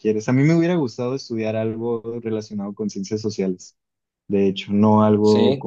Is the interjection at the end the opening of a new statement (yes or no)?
no